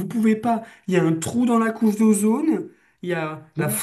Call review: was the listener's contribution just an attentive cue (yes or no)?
yes